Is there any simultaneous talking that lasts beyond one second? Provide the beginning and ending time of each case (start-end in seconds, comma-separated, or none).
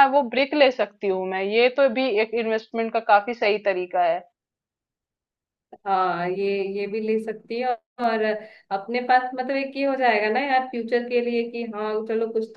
none